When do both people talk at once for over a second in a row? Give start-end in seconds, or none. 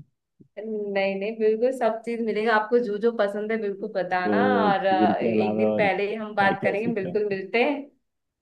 4.2-7.1